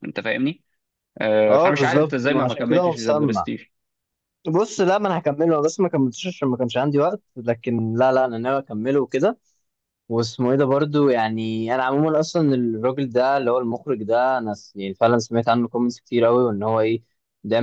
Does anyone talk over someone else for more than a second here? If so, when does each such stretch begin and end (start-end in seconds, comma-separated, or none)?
1.5-3.5